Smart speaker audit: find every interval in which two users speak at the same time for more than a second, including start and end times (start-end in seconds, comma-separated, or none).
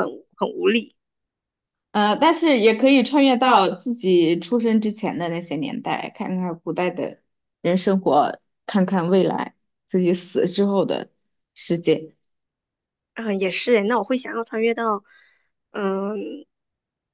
none